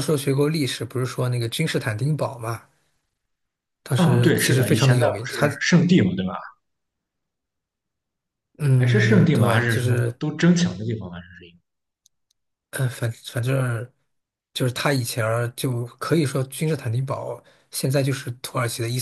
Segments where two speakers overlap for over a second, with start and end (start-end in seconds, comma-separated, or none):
4.0-5.5, 8.8-10.2